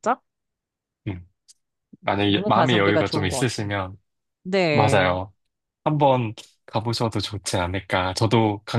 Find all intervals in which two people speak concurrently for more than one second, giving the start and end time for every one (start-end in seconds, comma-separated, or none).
2.3-3.7